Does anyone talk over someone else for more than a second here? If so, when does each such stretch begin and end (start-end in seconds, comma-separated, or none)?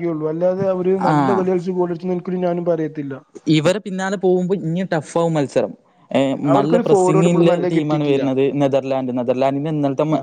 6.6-8.2